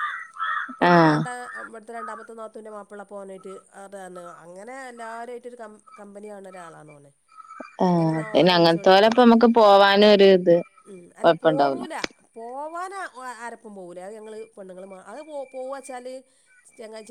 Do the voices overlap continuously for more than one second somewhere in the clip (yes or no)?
yes